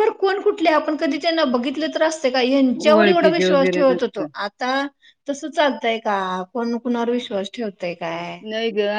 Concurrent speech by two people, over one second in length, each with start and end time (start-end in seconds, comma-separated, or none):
2.9-4.3